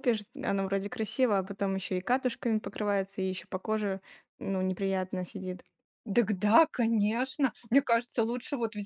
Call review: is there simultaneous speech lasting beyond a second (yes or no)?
no